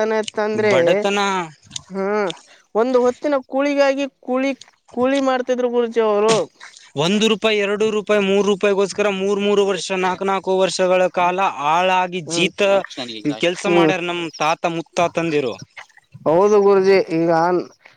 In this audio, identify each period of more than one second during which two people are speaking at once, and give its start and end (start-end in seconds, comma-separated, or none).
none